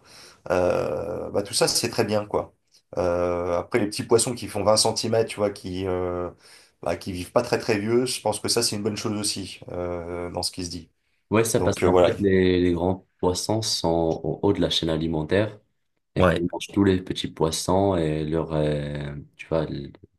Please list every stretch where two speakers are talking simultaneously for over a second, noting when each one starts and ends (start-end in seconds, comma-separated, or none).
none